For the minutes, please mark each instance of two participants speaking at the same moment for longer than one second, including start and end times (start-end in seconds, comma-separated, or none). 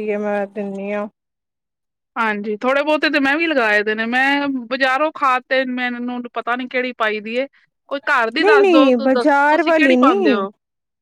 8.4-10.5